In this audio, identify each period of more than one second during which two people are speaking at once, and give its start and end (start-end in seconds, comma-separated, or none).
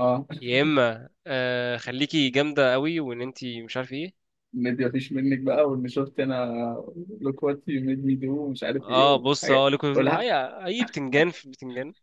8.8-10.4